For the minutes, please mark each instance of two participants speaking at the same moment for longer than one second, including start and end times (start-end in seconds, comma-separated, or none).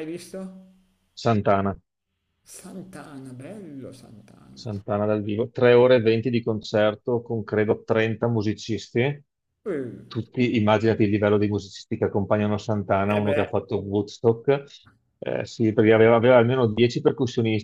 none